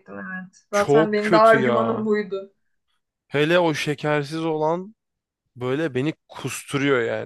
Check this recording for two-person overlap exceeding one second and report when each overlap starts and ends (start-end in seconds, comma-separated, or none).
0.7-2.1